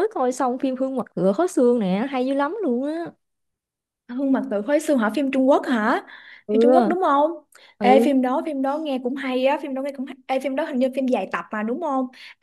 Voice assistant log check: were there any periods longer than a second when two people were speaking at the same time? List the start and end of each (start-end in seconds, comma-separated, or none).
none